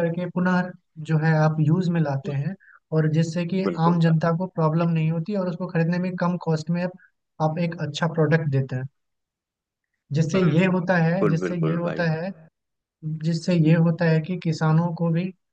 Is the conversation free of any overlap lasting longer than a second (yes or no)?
no